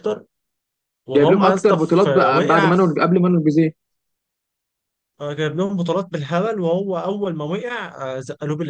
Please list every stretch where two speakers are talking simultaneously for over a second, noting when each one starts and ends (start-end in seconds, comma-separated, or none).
1.2-2.9